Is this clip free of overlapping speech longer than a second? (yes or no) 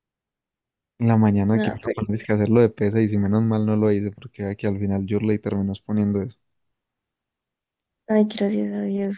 yes